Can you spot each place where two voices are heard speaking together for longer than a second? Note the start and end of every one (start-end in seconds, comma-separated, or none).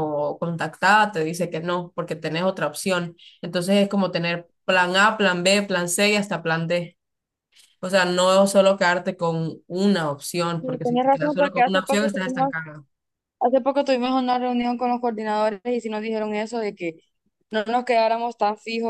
10.6-12.5